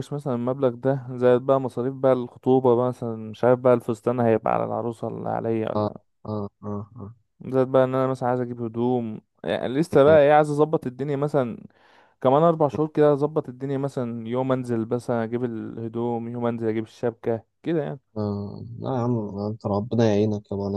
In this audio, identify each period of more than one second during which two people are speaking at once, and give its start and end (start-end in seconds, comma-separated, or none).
none